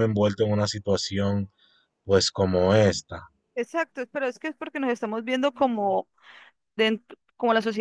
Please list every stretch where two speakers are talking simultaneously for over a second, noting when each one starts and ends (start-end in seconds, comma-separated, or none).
none